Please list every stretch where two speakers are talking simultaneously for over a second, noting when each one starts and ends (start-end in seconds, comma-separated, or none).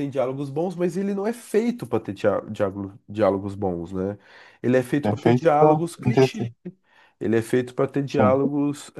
5.0-6.5